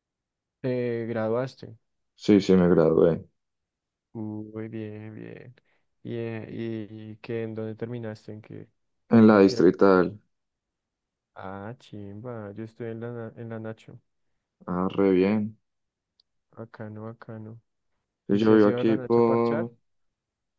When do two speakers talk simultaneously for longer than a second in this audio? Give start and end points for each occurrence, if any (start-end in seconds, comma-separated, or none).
18.3-19.7